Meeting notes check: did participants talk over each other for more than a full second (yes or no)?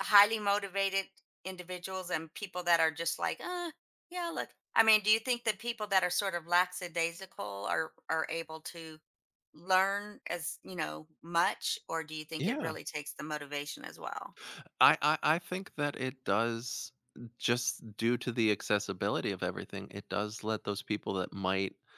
no